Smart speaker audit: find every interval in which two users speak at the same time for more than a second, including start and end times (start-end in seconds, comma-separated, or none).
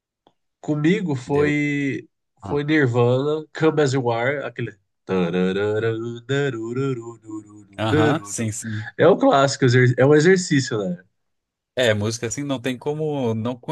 none